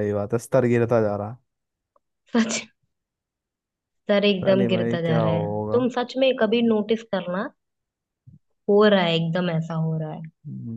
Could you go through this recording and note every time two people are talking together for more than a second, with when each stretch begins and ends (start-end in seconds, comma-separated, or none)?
4.3-5.9